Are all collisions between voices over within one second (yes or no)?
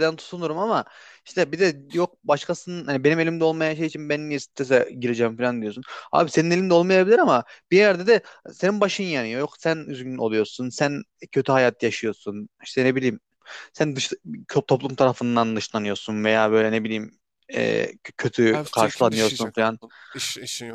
no